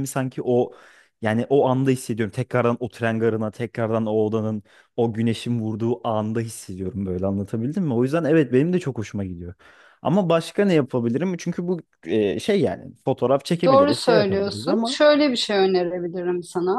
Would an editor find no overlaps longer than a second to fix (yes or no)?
no